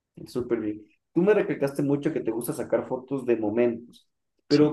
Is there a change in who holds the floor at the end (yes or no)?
no